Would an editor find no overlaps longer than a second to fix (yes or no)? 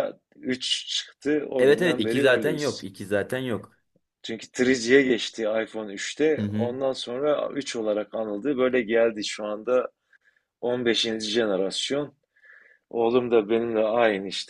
no